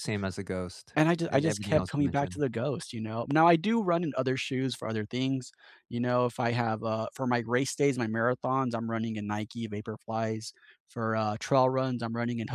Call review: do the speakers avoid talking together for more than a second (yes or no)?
no